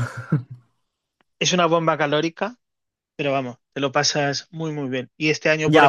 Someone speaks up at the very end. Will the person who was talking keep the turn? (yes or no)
no